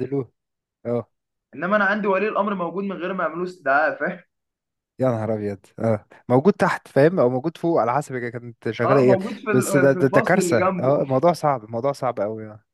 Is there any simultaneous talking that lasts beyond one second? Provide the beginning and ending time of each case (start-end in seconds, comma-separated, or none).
8.8-11.0